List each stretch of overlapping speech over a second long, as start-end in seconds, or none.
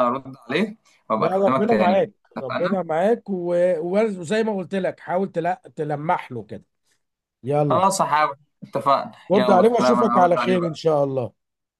1.2-2.8, 9.3-10.8